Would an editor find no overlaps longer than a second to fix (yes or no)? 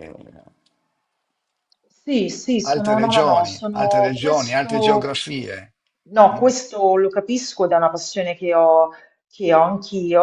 no